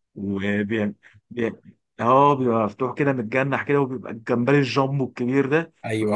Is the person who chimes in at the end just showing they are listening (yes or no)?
yes